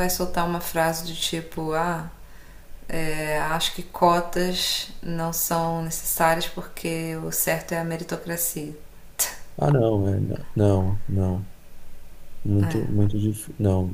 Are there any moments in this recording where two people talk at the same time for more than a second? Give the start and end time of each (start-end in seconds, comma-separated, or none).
none